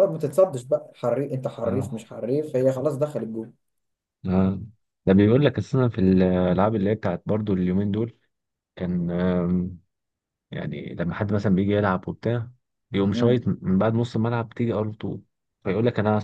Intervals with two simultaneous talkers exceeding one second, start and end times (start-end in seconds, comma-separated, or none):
none